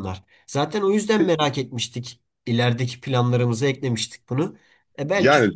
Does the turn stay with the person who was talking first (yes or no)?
yes